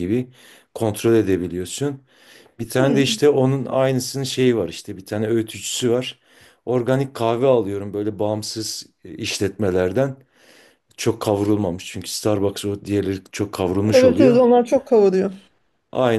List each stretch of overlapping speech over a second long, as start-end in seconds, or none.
none